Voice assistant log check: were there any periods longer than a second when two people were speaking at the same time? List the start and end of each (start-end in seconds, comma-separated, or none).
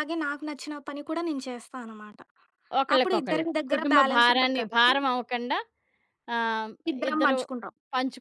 3.0-4.9